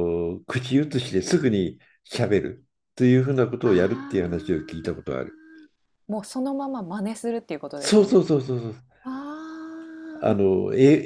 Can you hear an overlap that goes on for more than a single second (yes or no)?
yes